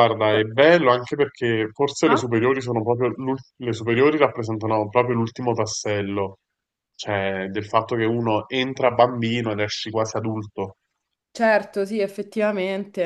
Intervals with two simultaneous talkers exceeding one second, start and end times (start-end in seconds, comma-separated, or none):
none